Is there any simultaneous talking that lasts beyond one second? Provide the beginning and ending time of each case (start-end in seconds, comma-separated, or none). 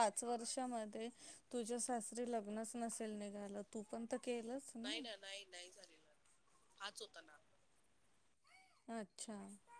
none